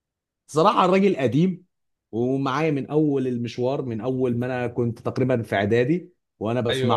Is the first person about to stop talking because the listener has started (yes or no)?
yes